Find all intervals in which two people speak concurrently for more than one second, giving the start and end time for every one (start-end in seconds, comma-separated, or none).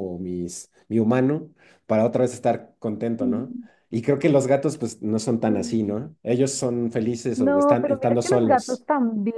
7.3-8.8